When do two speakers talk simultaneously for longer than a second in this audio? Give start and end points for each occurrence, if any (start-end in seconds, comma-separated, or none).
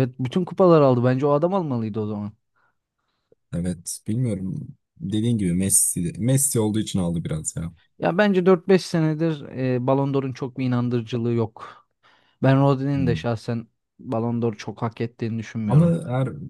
none